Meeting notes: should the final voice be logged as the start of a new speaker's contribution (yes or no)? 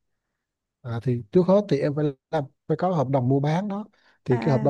no